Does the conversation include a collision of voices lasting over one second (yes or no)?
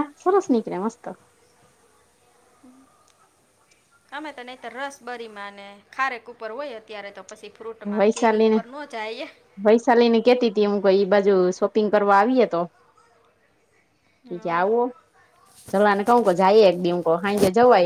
no